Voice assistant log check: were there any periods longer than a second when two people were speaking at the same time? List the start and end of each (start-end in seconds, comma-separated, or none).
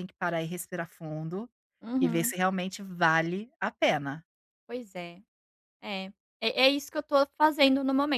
none